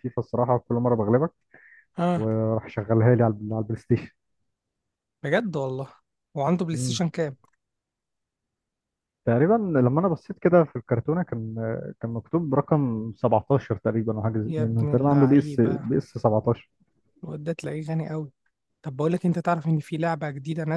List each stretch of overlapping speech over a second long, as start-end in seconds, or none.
14.5-15.9